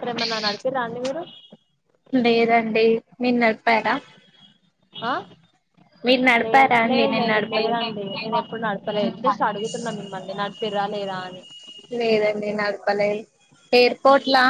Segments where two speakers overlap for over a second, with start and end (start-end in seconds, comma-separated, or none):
6.4-8.0